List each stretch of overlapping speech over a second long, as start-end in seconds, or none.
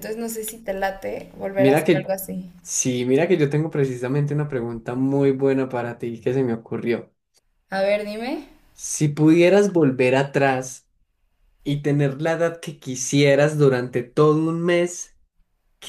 none